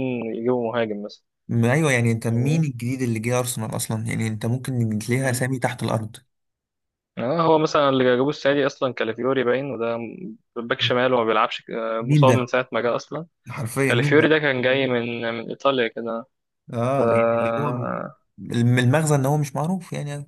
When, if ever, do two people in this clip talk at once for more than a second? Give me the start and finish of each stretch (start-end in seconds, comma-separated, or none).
none